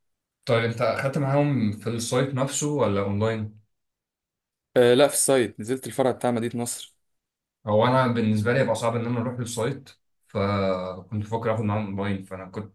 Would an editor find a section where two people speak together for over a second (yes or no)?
no